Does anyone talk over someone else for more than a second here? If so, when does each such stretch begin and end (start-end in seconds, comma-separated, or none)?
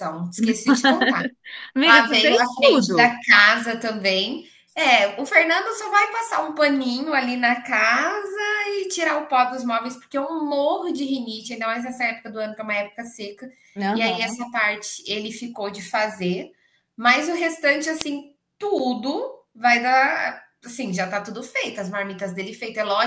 1.8-3.2